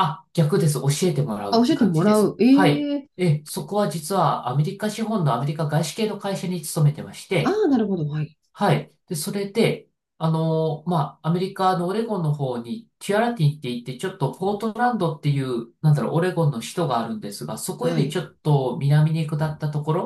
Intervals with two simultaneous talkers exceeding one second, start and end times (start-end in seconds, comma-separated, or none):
1.5-3.1